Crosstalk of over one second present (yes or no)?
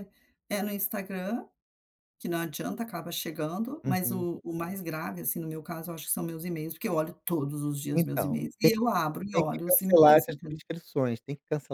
yes